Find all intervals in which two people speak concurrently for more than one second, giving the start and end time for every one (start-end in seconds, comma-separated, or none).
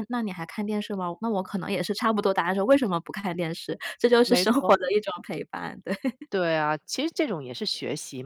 none